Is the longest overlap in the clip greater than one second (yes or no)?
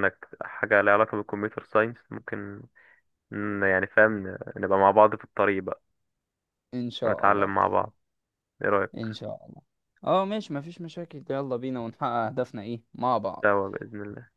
no